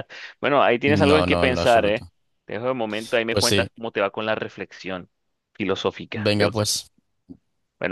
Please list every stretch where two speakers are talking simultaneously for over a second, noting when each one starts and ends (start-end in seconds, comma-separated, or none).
0.9-2.1